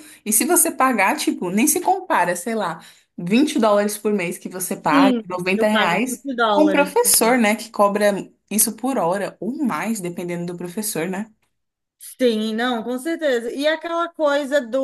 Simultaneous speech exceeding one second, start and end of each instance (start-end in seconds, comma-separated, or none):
4.9-7.0